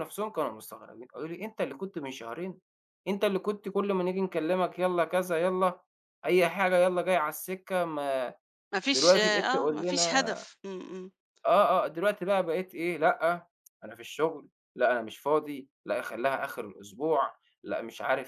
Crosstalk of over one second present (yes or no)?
yes